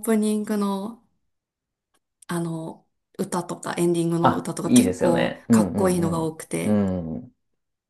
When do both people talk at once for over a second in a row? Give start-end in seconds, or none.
4.2-6.8